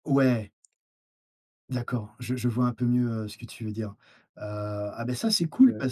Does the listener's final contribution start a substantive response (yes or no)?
no